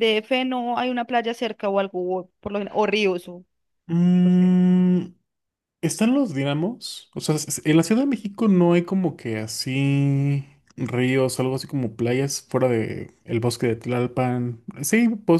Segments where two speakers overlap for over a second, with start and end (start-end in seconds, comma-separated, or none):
none